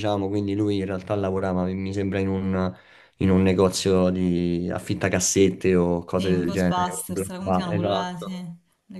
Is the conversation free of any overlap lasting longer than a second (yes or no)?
no